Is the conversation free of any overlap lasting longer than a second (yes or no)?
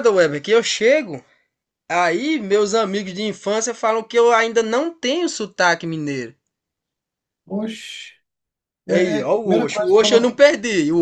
no